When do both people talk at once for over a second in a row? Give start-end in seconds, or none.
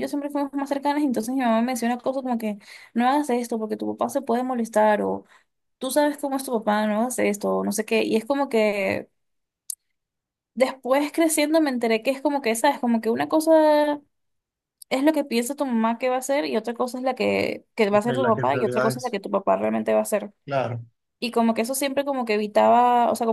17.9-19.2